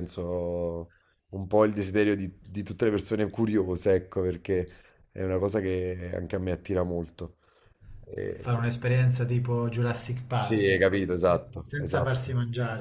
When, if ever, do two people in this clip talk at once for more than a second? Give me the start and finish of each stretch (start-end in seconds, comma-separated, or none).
10.3-12.2